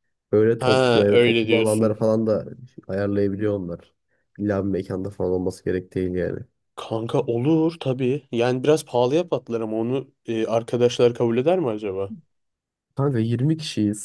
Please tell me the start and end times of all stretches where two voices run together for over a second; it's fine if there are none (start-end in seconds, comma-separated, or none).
0.6-2.0